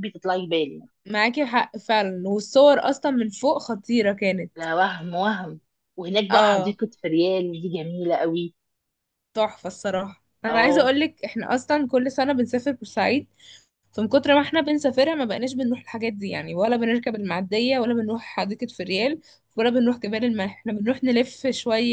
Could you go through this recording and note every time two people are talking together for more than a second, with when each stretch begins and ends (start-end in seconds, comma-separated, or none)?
none